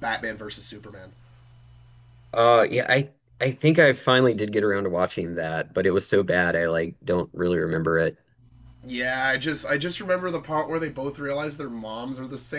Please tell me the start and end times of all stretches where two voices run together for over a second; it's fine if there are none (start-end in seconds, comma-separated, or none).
none